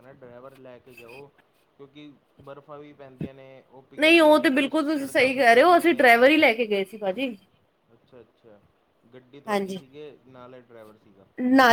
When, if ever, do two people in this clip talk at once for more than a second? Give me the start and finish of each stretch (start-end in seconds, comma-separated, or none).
4.0-6.1